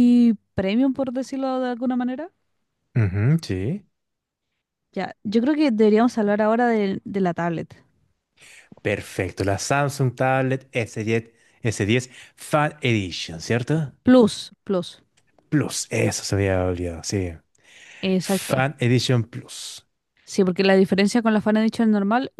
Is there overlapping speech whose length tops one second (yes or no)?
no